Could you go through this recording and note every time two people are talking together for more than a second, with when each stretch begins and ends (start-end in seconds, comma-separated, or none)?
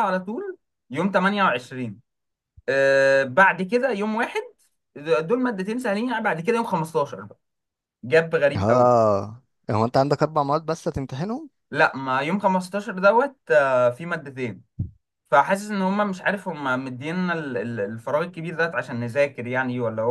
none